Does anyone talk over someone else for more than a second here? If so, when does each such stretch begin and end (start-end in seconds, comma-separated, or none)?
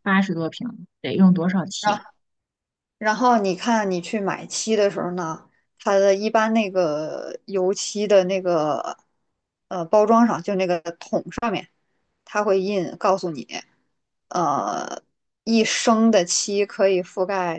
none